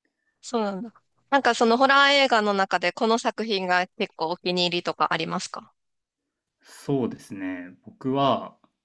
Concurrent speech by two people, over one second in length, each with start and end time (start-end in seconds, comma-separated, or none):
none